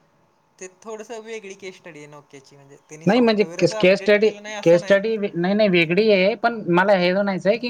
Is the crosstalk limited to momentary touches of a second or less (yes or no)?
no